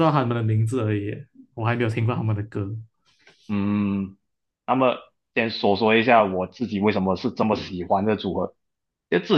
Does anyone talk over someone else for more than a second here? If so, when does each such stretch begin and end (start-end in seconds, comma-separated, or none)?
none